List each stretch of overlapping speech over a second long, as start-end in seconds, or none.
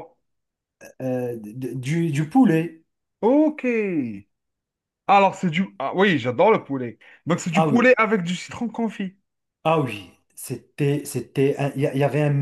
none